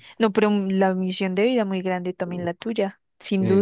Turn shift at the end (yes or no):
yes